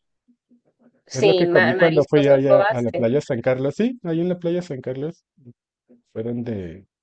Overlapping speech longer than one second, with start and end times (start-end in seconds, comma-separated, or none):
1.1-3.0